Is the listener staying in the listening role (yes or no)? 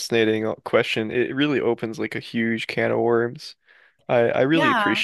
yes